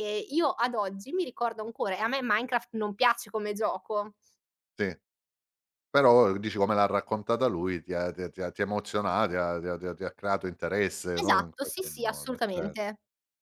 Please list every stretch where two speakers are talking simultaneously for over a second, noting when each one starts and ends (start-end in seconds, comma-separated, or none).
11.2-12.8